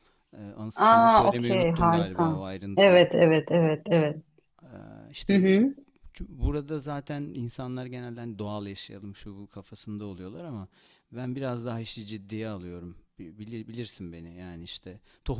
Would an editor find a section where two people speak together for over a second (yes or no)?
yes